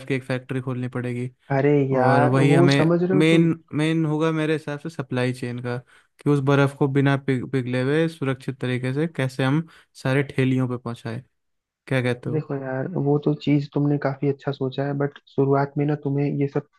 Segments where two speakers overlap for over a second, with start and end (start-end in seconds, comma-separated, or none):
1.9-3.5